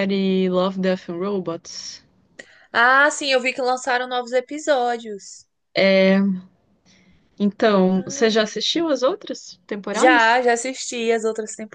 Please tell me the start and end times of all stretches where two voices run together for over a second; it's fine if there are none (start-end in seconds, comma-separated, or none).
none